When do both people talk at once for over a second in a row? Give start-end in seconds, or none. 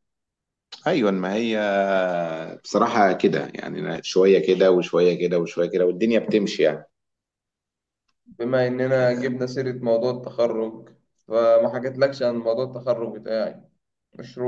none